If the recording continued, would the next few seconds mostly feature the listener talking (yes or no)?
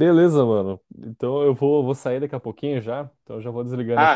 yes